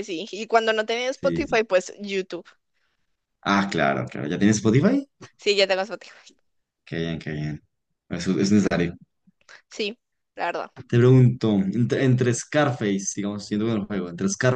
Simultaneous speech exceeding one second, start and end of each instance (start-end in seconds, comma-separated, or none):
none